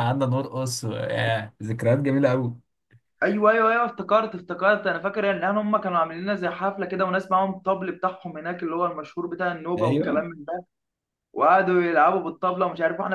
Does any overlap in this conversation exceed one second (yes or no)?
no